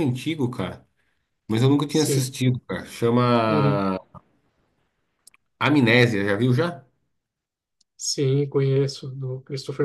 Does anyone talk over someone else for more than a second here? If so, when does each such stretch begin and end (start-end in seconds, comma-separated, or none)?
none